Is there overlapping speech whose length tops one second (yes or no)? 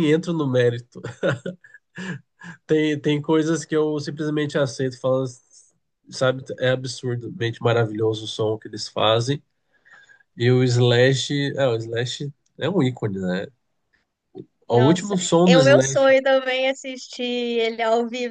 yes